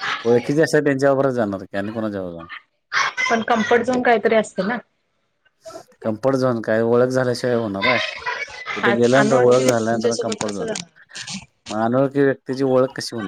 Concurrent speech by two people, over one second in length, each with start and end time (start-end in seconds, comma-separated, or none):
9.2-10.7